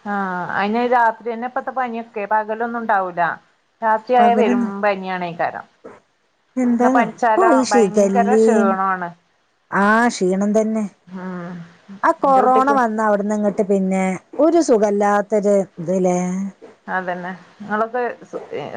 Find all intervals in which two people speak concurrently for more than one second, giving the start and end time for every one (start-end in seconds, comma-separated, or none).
6.8-8.7